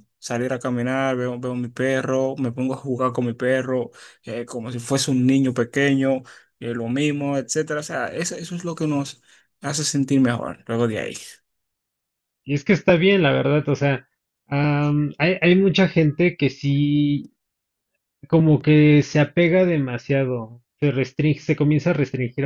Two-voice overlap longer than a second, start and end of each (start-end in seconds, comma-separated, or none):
none